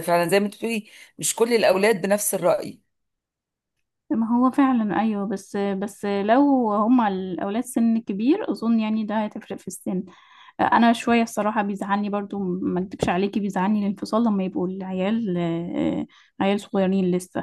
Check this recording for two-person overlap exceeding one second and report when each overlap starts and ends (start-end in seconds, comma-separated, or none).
none